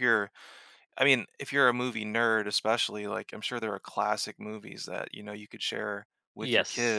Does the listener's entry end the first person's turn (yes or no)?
yes